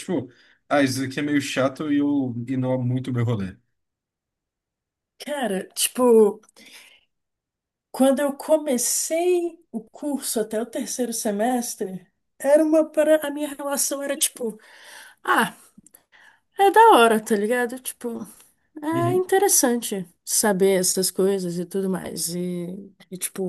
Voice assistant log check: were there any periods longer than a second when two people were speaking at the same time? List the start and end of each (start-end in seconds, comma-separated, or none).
none